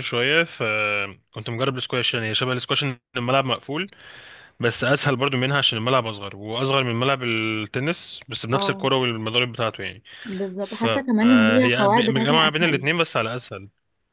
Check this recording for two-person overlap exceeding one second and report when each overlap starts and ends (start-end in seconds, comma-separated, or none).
10.6-12.9